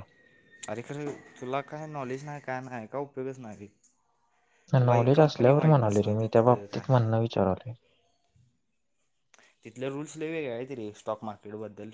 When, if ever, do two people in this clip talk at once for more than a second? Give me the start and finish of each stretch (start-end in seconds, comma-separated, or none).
4.8-7.0